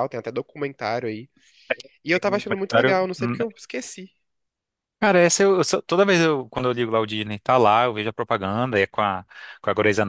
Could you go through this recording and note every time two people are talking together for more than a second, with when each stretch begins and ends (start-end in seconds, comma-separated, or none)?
2.1-3.4